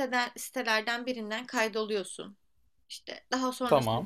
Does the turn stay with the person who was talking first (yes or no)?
yes